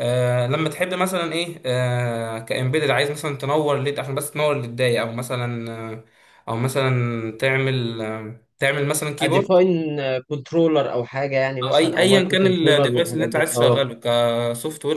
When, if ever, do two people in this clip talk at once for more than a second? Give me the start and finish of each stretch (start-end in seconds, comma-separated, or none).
11.6-13.8